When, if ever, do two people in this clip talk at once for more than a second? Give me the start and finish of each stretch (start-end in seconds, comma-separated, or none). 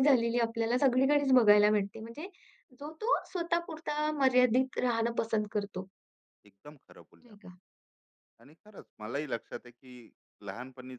none